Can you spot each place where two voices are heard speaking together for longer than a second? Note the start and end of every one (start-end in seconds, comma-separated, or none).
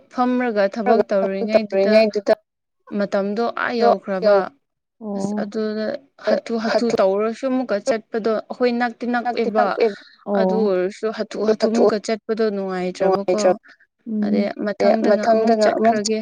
none